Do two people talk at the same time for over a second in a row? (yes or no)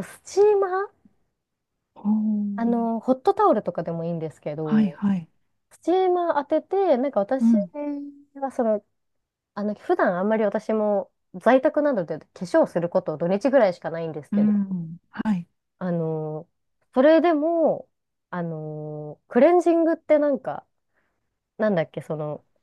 no